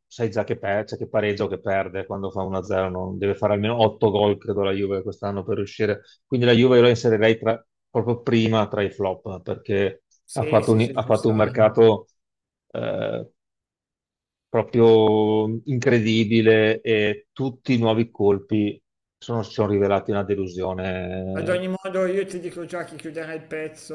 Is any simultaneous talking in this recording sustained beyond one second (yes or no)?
yes